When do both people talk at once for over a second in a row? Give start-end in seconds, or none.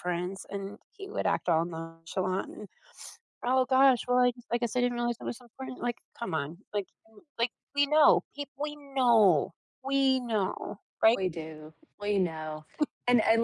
none